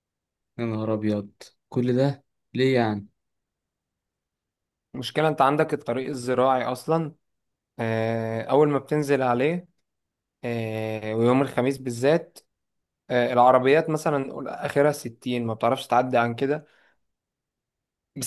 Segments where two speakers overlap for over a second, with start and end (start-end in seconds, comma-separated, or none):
none